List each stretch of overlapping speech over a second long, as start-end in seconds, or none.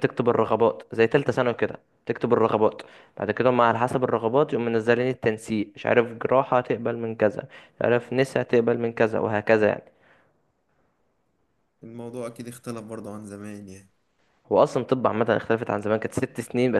none